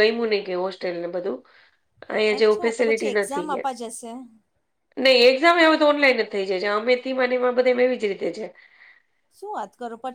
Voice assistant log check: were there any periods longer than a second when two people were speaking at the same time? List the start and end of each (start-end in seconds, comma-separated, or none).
2.4-3.7